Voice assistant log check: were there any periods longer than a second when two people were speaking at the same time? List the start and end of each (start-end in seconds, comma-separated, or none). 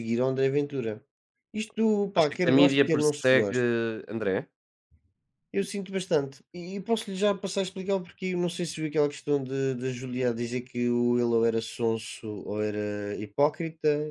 2.2-3.6